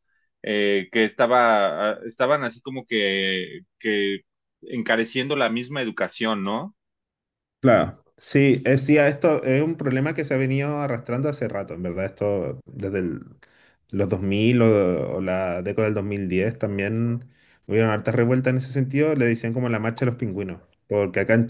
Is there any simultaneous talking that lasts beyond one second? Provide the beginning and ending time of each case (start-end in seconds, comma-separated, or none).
none